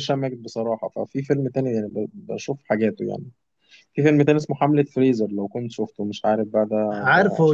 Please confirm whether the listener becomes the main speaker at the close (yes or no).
yes